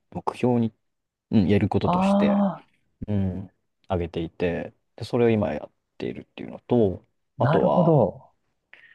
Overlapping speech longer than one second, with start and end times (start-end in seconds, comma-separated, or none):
none